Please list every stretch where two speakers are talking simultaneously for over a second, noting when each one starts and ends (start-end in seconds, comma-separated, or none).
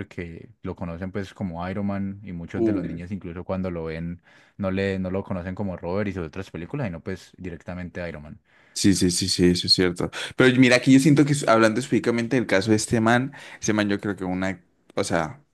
none